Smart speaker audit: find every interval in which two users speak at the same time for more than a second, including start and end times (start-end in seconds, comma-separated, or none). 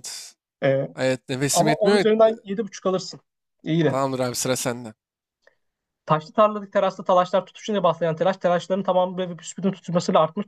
none